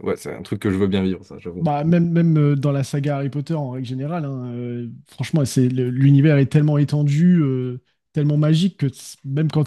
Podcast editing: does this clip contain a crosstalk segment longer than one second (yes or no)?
no